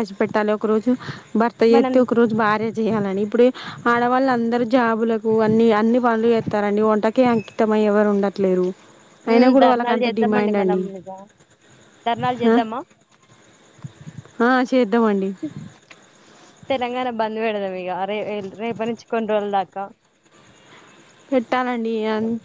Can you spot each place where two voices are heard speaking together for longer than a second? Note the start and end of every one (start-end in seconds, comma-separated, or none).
9.3-10.8